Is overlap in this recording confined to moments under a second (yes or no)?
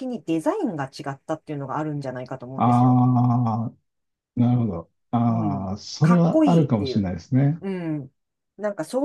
no